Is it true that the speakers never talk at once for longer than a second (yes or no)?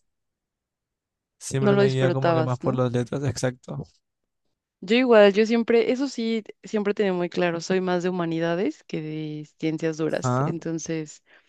no